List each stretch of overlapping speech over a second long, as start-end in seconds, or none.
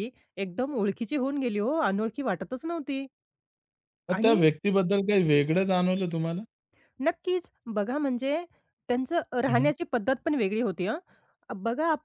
none